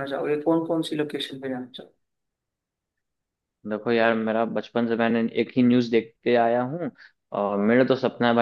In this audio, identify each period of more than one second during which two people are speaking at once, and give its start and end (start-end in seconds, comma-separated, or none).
none